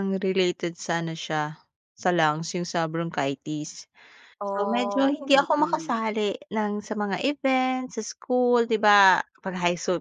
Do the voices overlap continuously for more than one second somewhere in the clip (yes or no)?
yes